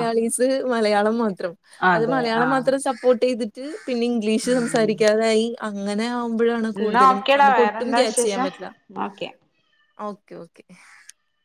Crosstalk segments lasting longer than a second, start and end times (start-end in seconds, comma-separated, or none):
6.8-8.5